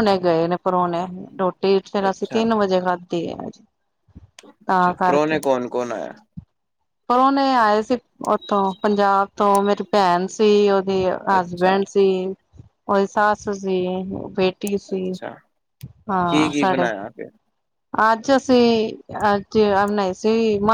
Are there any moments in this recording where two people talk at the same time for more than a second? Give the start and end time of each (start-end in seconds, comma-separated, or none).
none